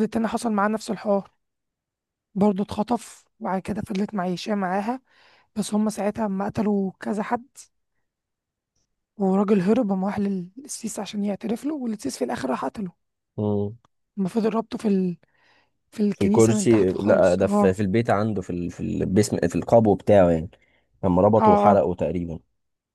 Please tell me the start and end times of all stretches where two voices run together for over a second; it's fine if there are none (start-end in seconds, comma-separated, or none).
16.1-17.8